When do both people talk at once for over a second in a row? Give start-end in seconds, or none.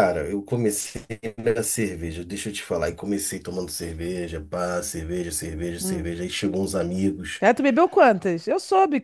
none